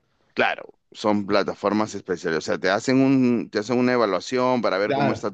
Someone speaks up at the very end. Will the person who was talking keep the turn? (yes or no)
yes